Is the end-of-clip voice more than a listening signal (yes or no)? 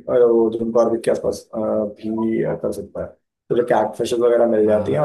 no